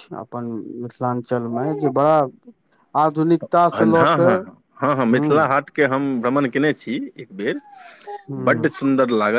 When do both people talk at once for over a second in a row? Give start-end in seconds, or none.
none